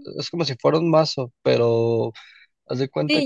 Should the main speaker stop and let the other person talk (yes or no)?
yes